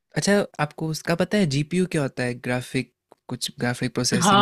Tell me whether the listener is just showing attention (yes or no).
no